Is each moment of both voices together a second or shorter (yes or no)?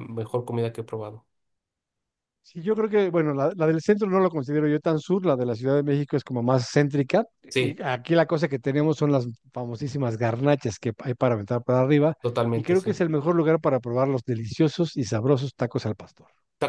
yes